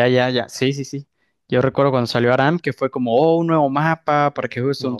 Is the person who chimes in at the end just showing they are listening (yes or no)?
yes